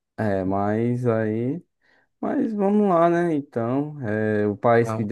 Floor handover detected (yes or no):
no